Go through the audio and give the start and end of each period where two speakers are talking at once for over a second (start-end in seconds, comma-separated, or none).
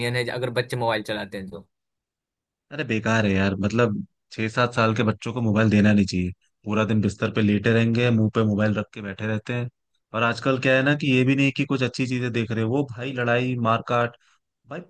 none